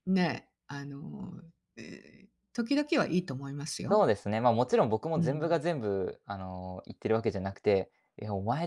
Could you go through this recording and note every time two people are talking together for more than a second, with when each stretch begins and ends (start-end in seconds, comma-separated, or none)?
none